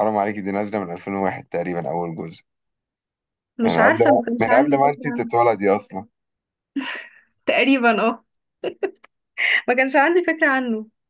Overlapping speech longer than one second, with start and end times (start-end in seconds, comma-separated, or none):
3.6-5.3